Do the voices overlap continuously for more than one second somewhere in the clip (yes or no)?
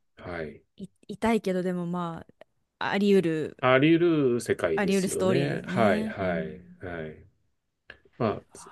yes